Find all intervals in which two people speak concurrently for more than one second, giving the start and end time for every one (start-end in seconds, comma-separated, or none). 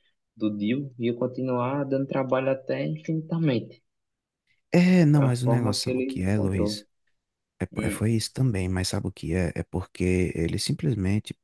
5.1-6.8